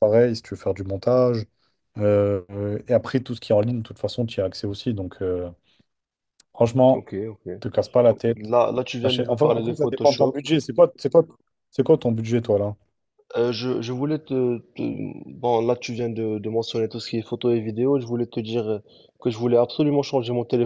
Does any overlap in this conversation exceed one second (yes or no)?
yes